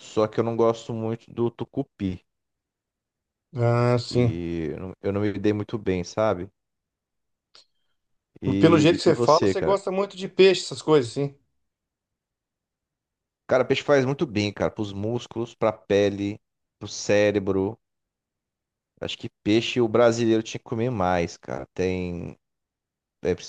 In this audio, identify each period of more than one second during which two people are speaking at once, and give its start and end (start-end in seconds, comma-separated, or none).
8.6-9.8